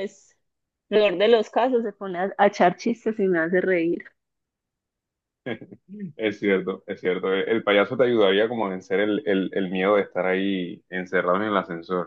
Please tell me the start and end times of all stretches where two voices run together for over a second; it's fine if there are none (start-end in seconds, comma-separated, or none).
none